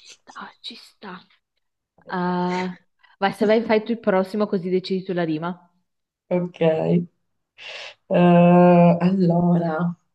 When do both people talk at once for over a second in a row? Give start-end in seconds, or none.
none